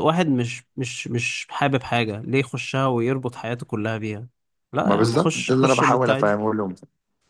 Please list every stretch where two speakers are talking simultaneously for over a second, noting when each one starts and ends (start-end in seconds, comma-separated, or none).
4.8-6.4